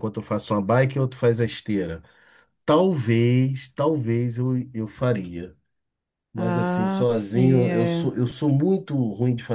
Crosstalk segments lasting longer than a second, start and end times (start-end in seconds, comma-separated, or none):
6.3-8.1